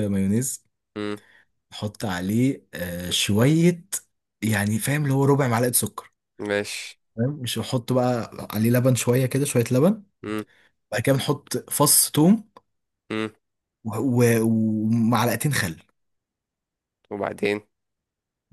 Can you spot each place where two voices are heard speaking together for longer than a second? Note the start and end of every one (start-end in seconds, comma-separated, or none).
none